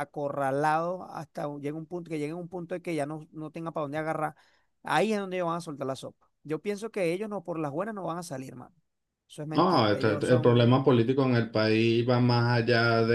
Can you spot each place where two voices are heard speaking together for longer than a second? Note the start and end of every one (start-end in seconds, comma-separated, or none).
9.5-10.8